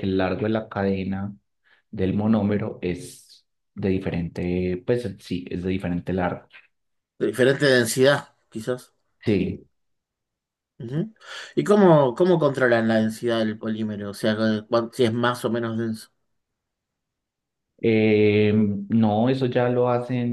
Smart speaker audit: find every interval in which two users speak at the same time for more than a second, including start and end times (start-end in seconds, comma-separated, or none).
none